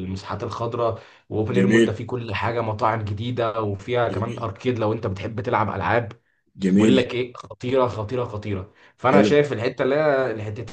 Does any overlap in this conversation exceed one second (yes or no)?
no